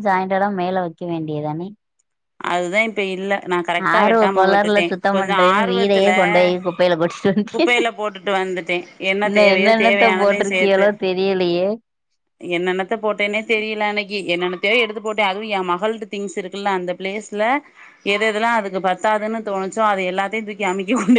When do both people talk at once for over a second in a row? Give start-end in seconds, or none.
3.9-6.1, 9.3-10.9